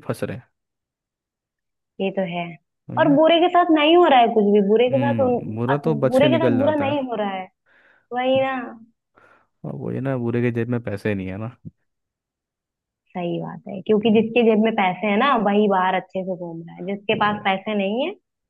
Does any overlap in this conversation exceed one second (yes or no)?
yes